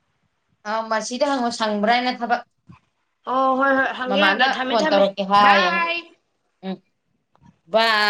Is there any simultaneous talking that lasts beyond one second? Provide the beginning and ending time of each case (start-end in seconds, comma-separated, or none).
4.1-5.8